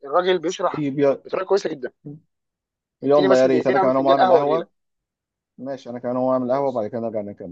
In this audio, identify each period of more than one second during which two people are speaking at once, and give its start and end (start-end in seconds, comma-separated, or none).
3.0-4.7